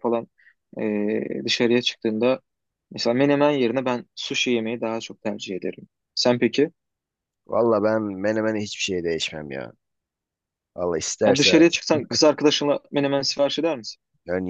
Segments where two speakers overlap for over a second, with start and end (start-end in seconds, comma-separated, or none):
none